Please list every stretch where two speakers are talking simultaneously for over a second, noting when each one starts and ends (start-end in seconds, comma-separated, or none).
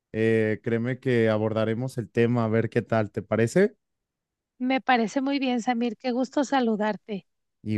none